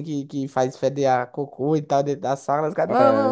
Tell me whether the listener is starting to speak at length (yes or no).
yes